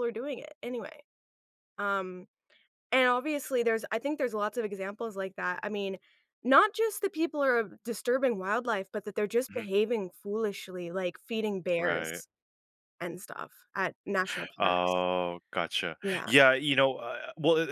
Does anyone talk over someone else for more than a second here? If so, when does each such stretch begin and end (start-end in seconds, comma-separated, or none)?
none